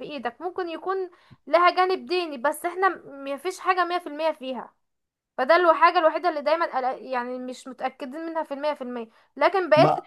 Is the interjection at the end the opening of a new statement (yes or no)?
no